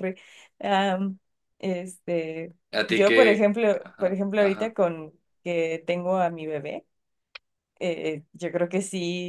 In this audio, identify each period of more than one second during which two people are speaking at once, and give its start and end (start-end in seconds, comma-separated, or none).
2.7-4.8